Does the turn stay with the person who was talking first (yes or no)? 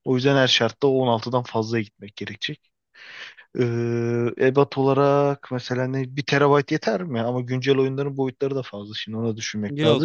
no